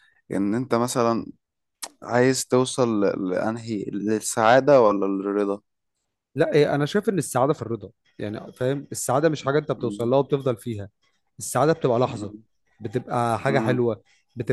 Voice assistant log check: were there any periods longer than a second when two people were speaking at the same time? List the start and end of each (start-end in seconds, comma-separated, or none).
none